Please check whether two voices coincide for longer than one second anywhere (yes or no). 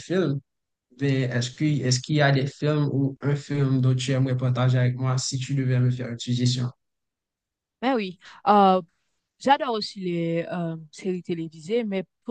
no